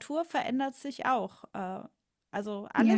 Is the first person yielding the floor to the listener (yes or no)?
no